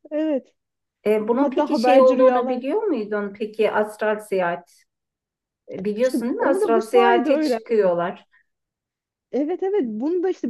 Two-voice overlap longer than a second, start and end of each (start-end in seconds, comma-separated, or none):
1.4-2.6, 6.0-7.9